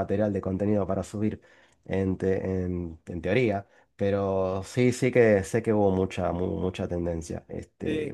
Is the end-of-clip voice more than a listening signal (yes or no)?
yes